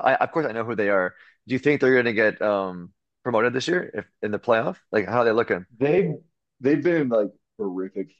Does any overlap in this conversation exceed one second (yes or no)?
no